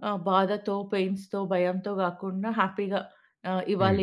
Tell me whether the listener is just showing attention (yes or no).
yes